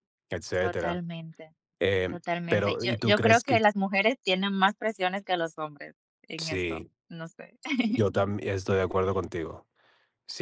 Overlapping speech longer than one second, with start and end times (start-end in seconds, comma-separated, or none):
2.1-3.6